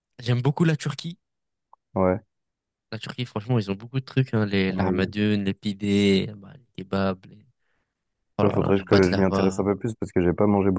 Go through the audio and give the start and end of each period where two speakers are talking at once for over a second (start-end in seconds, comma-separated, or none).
8.4-9.6